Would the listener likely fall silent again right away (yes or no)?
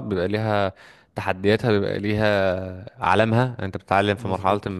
yes